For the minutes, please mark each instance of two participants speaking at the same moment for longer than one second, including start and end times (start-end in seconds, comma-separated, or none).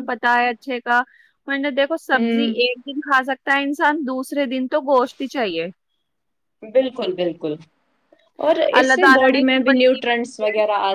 8.8-10.4